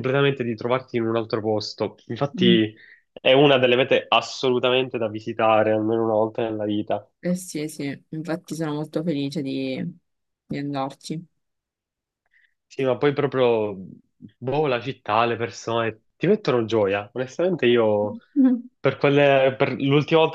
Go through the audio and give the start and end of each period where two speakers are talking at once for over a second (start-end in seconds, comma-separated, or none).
none